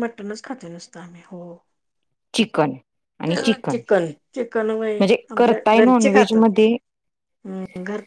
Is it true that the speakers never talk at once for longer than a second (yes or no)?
no